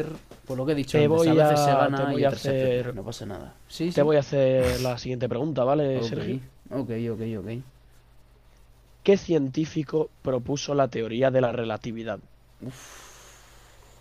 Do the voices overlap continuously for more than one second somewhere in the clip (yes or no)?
yes